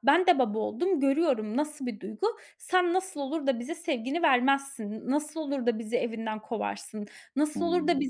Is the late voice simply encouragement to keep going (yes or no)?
yes